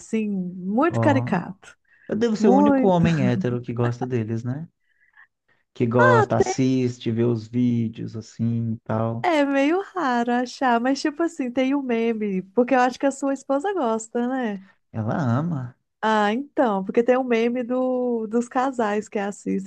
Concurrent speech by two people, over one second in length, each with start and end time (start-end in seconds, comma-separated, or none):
none